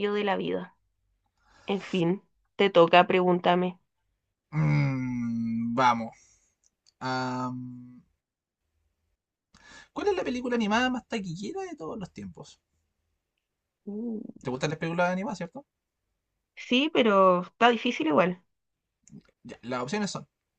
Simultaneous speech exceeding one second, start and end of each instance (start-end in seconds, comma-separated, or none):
none